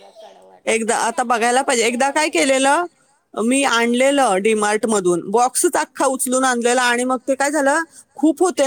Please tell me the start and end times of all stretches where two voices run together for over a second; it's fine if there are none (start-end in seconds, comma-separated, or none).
0.7-2.6